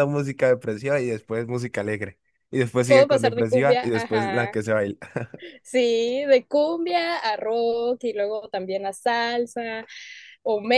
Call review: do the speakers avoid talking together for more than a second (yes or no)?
no